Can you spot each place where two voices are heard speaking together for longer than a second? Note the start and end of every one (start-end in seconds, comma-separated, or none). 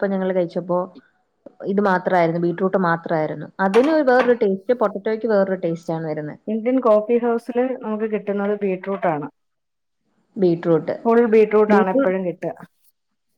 none